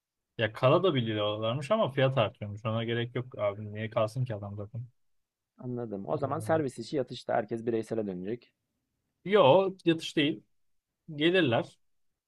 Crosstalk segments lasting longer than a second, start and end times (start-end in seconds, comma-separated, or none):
none